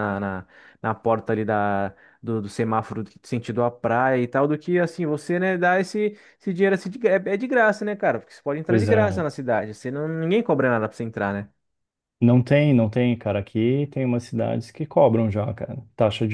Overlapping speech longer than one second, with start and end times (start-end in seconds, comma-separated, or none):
none